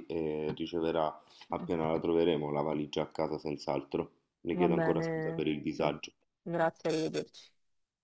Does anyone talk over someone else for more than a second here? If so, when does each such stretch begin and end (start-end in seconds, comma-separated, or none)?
4.5-5.8